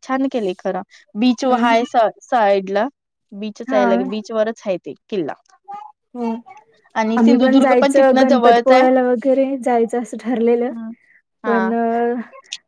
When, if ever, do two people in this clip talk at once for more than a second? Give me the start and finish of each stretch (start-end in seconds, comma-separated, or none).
7.2-8.8